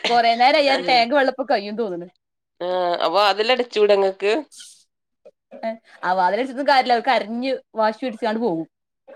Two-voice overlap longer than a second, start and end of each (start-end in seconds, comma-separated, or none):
none